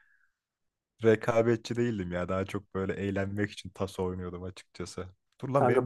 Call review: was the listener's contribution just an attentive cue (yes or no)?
yes